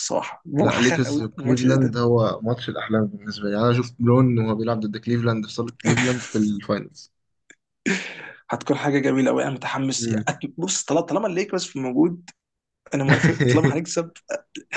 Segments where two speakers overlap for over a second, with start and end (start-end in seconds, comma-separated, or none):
0.6-2.0